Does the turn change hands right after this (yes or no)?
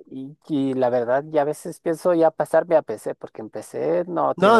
yes